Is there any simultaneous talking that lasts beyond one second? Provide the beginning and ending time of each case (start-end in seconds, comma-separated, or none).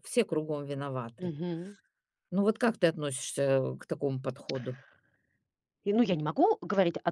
none